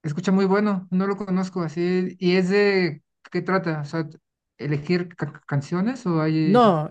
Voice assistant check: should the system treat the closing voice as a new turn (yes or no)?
yes